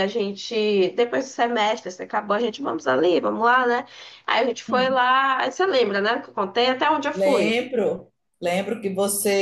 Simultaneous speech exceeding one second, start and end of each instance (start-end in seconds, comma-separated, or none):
none